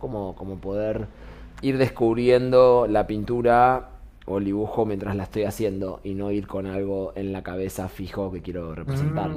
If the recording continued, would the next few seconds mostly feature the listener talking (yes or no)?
yes